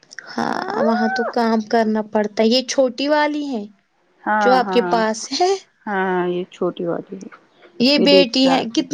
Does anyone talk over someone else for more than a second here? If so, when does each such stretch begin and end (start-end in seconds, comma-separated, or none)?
none